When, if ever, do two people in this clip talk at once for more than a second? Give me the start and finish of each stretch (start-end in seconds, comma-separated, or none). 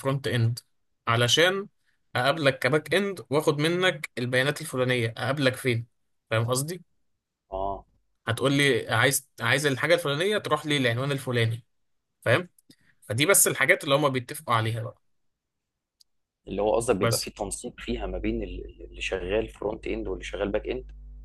none